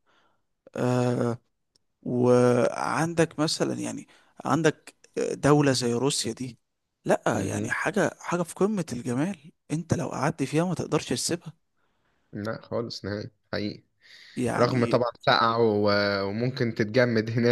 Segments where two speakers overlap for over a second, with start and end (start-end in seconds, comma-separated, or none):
none